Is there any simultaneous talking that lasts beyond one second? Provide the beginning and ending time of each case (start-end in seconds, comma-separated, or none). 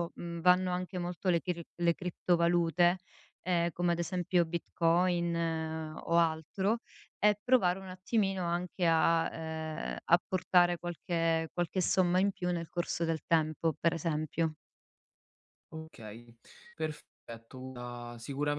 none